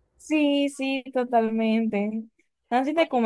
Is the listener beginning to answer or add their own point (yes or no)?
no